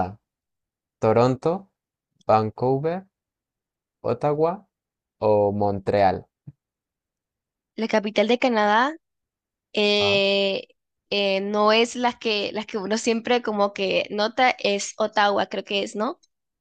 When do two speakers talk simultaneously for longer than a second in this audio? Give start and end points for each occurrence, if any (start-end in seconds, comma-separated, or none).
none